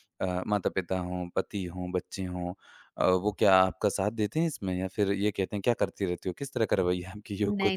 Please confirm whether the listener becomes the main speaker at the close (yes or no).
yes